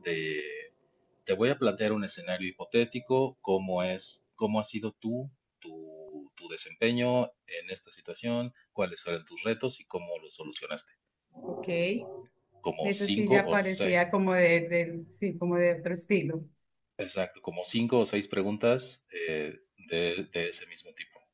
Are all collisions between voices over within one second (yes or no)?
no